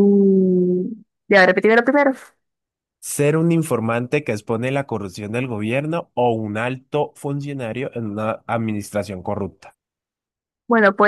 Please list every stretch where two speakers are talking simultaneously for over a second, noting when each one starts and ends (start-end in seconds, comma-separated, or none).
none